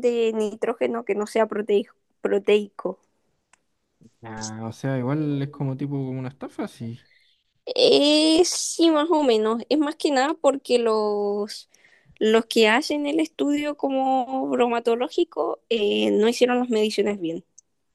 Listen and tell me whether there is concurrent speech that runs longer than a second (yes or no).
no